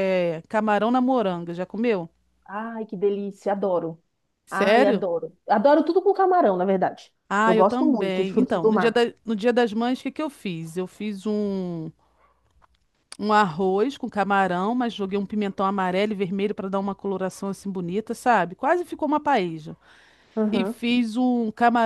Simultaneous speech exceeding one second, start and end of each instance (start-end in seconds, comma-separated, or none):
7.3-9.0